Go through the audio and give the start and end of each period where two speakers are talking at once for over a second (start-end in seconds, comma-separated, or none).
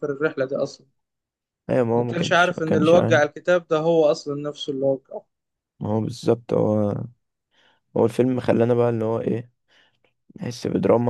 1.9-3.2